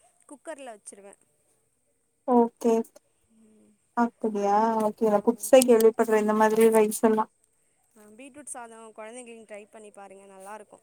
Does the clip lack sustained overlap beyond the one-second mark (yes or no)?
yes